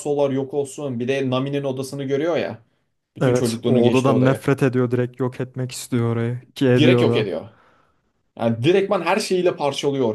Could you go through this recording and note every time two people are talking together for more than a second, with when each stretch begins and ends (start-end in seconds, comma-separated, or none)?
3.2-4.4